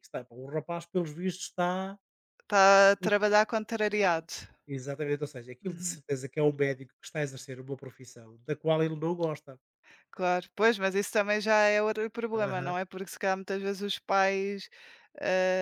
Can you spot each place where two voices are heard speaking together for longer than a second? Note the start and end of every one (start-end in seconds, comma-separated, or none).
none